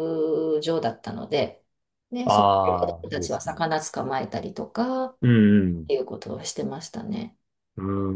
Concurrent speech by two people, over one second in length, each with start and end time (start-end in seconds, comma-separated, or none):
2.2-3.6